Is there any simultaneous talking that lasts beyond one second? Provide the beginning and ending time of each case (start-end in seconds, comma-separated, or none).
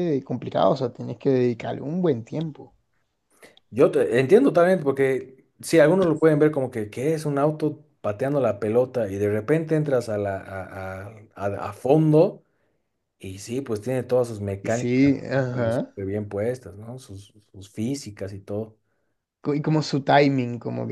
14.6-15.9